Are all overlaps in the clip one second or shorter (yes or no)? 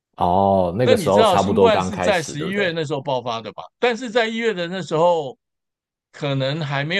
no